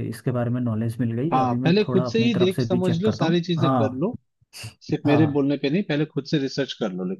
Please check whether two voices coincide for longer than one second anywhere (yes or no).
yes